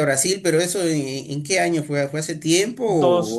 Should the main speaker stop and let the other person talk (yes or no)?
yes